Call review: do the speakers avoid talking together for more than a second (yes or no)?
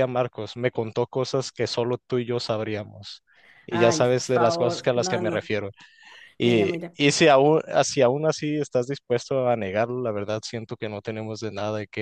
no